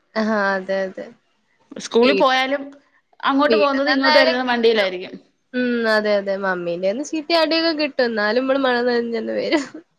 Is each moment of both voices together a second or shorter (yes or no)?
no